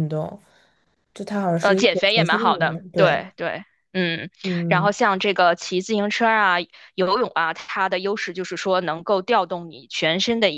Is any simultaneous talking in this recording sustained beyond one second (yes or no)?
yes